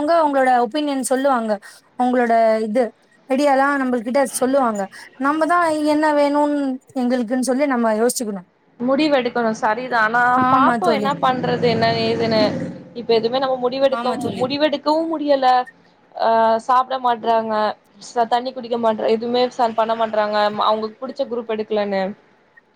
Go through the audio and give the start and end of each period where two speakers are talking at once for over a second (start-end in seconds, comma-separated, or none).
none